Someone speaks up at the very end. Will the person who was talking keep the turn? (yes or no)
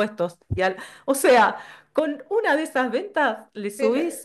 yes